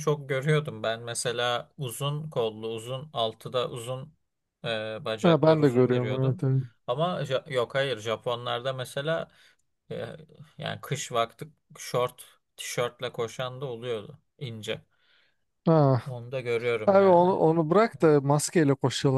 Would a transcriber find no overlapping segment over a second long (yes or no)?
no